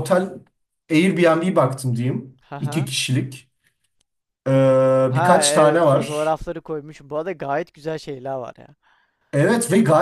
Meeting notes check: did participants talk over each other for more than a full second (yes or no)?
yes